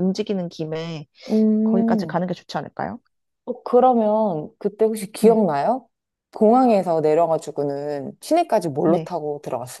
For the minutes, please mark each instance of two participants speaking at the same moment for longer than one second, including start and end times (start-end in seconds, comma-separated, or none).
none